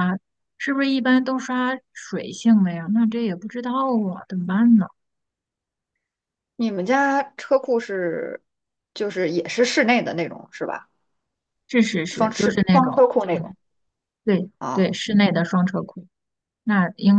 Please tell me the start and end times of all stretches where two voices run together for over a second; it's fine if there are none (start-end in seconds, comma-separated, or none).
12.1-13.5